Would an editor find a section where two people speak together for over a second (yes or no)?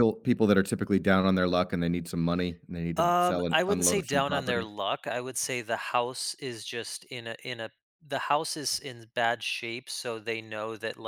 yes